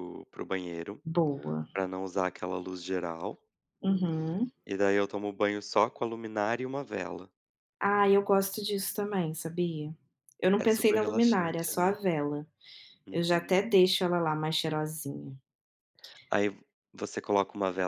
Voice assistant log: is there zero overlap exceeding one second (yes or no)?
no